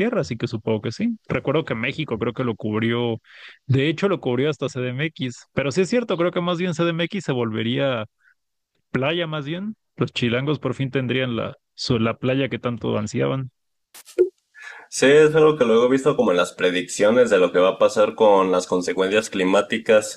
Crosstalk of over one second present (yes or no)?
no